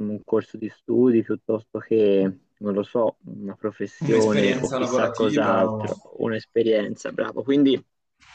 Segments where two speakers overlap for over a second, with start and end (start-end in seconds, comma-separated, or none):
4.0-6.1